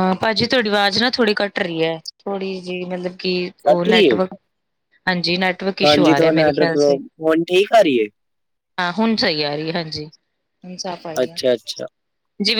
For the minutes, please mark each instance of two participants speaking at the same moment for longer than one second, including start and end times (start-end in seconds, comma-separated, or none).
none